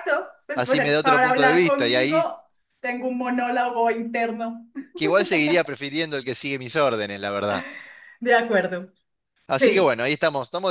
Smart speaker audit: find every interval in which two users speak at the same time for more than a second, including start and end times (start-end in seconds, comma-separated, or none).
0.5-2.2